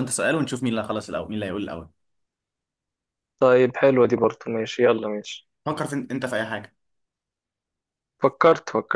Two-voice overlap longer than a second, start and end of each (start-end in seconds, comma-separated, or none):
none